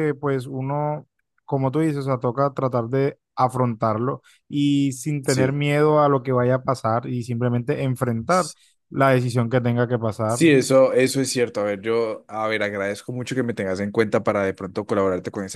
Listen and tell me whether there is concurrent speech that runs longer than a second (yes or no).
no